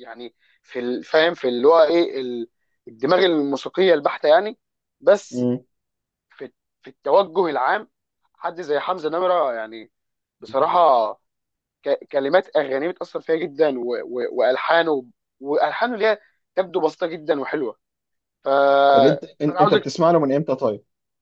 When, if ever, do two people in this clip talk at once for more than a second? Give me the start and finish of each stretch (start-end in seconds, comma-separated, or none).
none